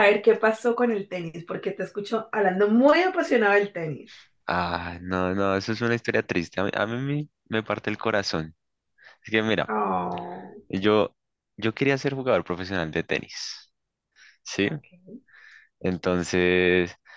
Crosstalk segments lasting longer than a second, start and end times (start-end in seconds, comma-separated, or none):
none